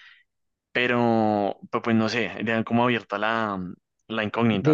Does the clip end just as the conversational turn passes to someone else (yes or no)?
yes